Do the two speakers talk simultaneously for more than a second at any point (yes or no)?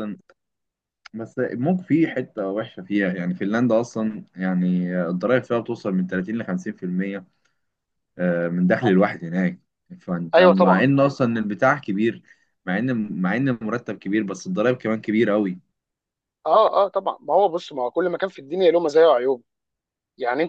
no